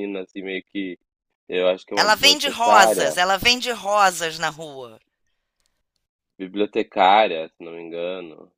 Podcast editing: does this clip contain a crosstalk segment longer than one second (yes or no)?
yes